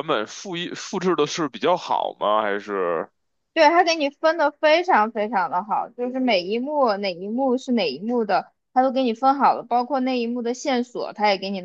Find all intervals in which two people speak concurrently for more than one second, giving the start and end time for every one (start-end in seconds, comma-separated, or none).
none